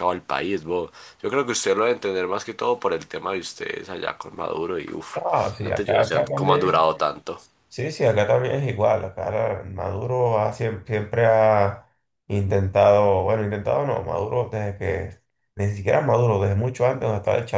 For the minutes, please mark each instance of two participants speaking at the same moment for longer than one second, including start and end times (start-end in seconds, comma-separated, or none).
5.6-6.9